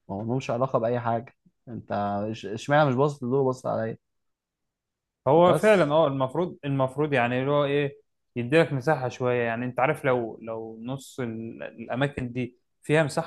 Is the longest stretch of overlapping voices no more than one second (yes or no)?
yes